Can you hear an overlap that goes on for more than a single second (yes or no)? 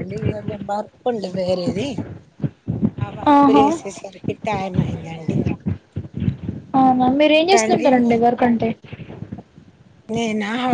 no